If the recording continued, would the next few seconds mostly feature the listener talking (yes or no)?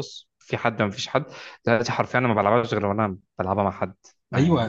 yes